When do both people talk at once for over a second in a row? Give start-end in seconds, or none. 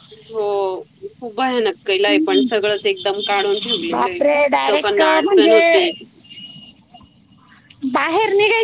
3.9-5.9